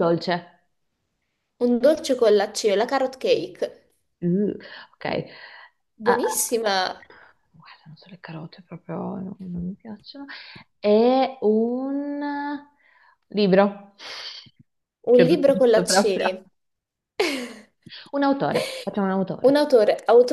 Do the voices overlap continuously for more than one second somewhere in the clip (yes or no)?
yes